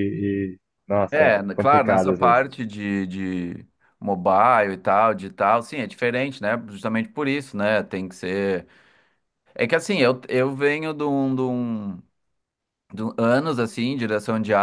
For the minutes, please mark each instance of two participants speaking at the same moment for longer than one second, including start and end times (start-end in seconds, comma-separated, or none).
1.1-2.4